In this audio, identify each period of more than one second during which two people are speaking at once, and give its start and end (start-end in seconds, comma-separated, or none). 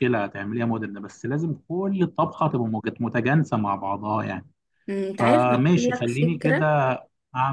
5.2-6.7